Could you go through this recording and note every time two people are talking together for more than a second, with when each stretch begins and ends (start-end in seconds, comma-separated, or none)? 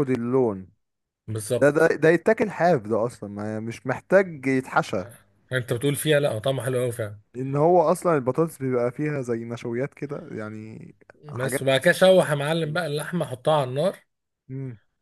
none